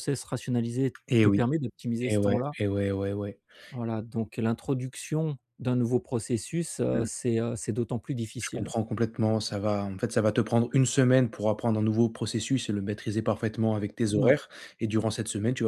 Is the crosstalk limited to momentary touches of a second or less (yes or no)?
yes